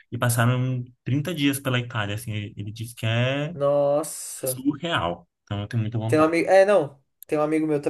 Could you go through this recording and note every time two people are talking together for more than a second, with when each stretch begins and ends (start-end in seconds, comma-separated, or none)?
none